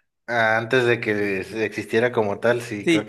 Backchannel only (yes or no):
no